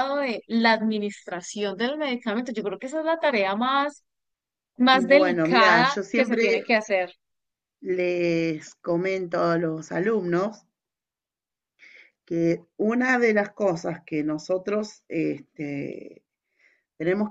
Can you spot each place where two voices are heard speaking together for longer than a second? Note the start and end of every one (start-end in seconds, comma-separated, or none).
4.9-6.4